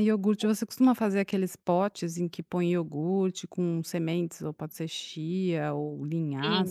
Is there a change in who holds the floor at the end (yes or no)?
yes